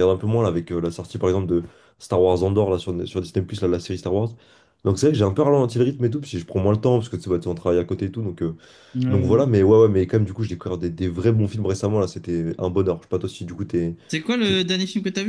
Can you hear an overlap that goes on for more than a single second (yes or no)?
no